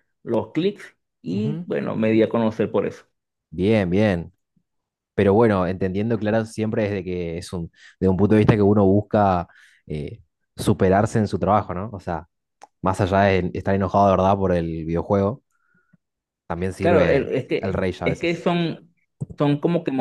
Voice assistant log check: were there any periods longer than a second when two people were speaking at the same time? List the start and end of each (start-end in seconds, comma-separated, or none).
16.8-18.5